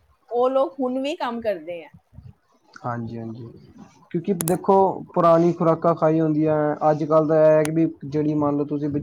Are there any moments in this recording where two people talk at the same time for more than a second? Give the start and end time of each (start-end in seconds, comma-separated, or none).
none